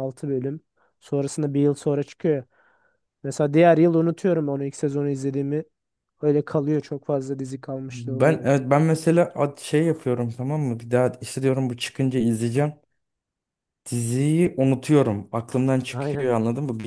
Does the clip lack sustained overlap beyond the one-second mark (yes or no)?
yes